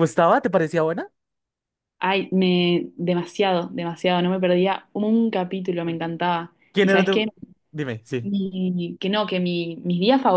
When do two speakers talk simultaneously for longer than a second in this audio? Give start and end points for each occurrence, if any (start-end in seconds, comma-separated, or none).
none